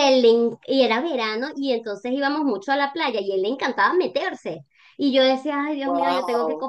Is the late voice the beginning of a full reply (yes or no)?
no